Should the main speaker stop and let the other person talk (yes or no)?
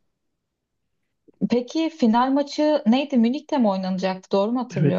yes